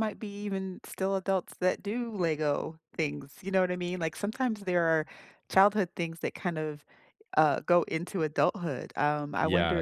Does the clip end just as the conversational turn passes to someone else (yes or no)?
yes